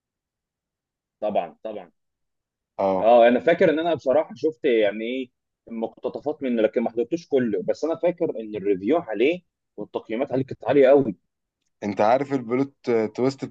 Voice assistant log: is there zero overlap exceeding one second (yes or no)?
yes